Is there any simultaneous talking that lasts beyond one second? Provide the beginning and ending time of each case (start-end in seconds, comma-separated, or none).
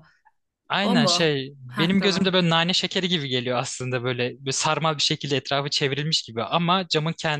0.8-2.3